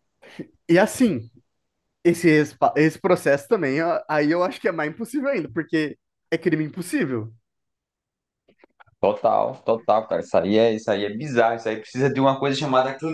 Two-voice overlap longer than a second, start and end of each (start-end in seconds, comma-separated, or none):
none